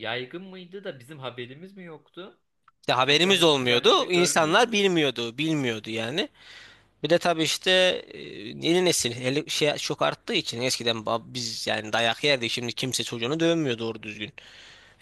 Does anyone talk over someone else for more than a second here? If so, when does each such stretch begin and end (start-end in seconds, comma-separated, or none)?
3.0-4.7